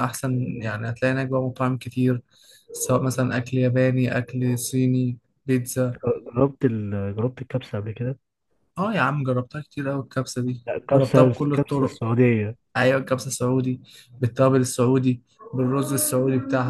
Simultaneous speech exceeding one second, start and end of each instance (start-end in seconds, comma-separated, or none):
10.7-12.0